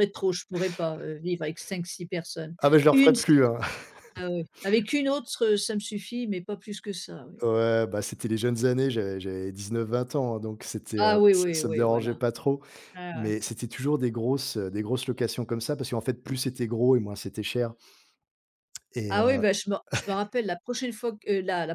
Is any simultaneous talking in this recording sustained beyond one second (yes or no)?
yes